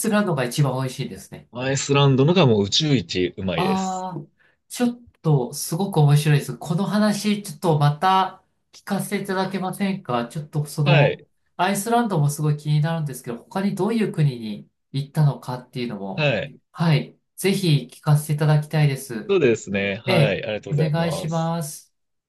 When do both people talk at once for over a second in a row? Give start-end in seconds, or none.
20.1-21.5